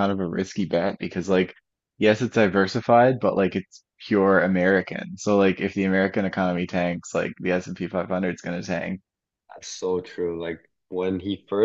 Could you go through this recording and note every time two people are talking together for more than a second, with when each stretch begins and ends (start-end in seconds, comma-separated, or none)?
none